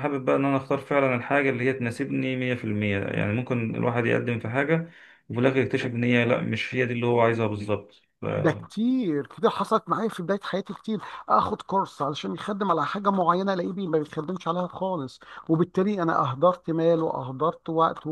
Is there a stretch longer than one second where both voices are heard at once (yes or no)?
no